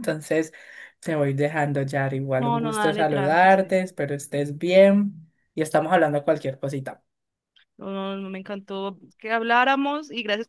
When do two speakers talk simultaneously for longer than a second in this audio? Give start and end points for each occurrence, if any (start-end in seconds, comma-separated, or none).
2.4-3.7